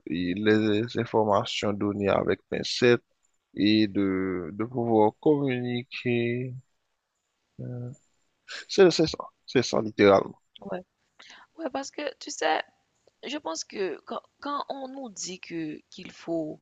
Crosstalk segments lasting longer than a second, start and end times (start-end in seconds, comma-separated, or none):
none